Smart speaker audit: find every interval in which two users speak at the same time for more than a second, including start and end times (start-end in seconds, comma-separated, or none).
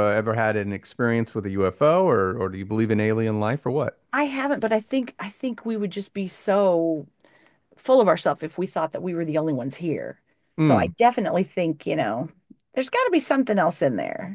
none